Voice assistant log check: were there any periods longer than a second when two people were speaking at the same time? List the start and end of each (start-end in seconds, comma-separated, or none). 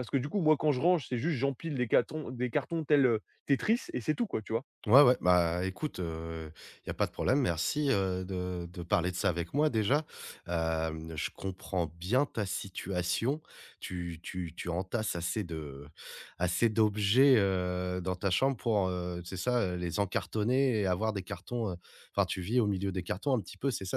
none